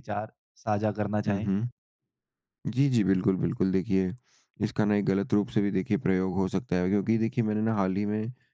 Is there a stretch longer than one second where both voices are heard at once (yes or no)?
no